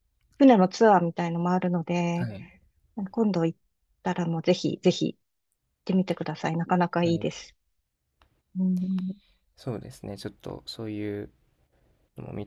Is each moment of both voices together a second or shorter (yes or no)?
yes